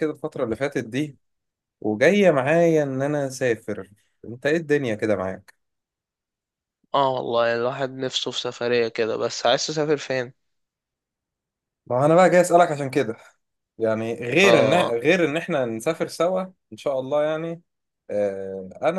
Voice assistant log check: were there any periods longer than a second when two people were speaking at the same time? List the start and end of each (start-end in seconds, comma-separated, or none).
none